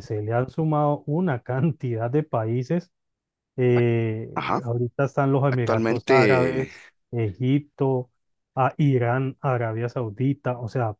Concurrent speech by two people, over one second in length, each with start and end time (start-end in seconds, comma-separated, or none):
5.5-6.7